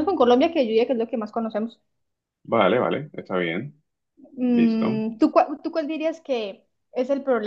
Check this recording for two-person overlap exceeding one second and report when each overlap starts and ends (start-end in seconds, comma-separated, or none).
none